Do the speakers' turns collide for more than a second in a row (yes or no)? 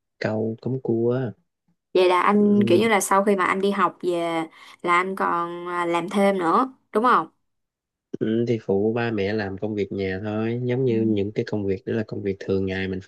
no